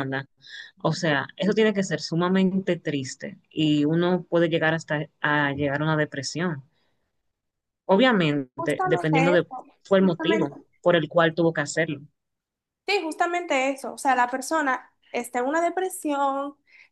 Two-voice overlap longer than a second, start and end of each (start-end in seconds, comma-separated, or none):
8.5-10.5